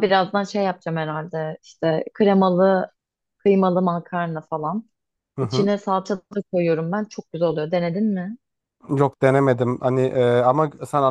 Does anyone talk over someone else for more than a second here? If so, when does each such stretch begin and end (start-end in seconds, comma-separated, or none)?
none